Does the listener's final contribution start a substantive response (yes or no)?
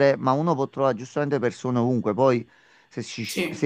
no